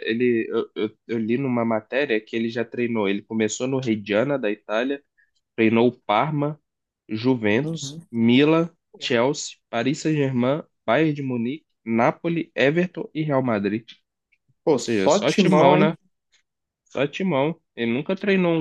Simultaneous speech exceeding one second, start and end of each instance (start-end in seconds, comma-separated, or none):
14.7-15.9